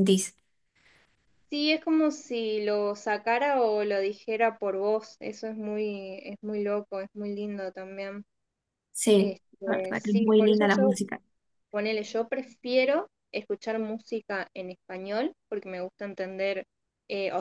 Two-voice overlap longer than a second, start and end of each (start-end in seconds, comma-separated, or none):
9.2-11.0